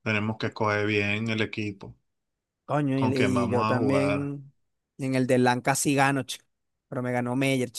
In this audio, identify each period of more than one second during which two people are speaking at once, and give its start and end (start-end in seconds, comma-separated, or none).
3.0-4.3